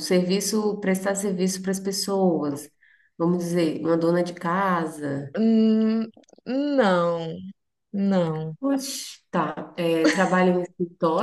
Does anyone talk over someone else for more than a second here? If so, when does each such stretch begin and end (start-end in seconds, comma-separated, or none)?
none